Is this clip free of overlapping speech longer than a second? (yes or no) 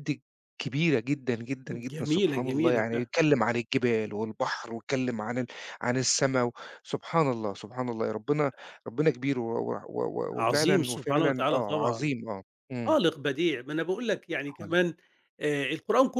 no